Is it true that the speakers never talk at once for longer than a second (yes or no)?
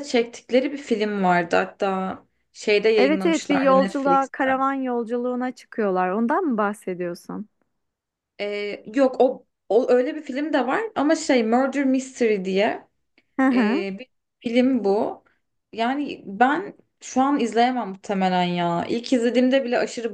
no